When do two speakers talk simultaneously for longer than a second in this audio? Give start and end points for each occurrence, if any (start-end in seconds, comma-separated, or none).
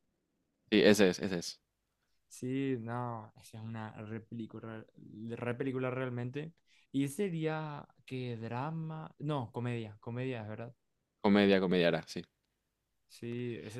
none